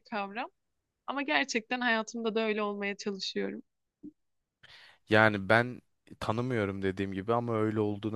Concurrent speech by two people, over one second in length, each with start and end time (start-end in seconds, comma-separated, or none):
none